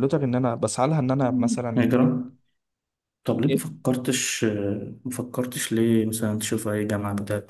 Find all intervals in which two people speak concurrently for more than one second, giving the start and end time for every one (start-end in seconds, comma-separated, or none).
none